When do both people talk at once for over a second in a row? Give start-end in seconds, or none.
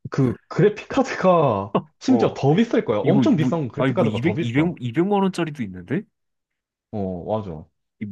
3.0-4.4